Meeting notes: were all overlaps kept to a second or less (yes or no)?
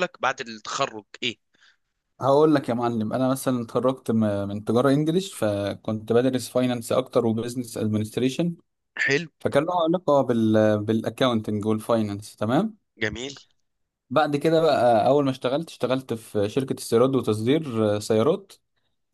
yes